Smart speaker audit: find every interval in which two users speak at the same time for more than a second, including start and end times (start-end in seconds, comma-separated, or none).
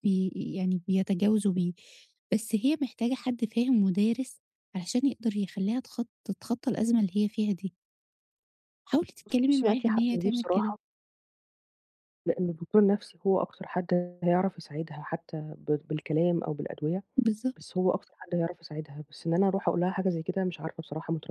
9.5-10.8